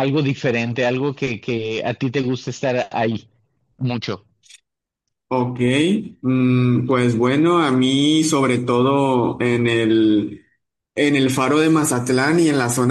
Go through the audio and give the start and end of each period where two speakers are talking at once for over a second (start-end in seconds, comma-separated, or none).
none